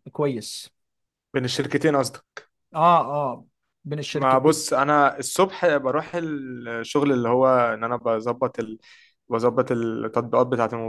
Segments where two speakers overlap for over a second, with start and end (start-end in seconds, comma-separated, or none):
none